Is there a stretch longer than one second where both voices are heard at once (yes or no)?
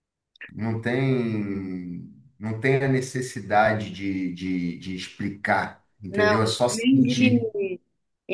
yes